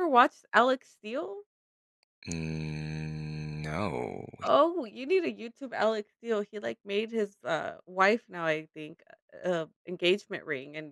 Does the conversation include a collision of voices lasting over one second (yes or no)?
no